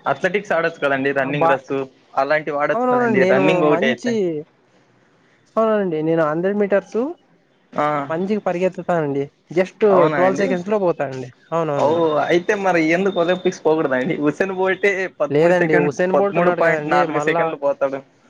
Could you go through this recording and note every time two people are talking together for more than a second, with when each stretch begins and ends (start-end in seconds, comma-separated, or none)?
15.3-17.4